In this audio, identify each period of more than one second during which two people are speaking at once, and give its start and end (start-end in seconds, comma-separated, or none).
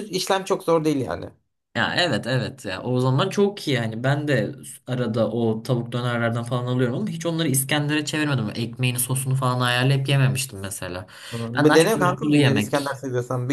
11.6-13.0